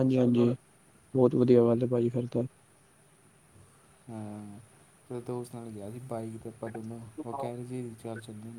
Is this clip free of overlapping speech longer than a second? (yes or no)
yes